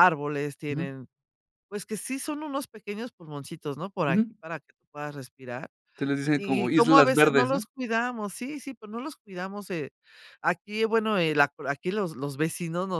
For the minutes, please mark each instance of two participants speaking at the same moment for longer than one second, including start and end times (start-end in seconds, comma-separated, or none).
6.3-7.6